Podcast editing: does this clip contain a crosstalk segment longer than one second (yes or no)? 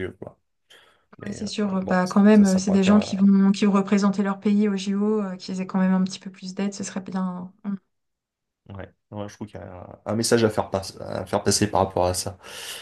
yes